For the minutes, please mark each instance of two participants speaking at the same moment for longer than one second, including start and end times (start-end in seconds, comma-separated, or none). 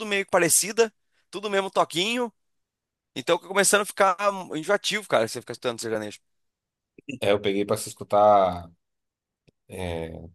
none